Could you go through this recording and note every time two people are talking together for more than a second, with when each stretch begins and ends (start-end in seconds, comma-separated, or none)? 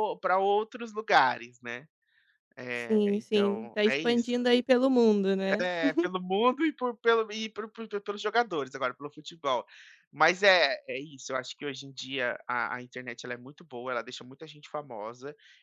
2.7-4.3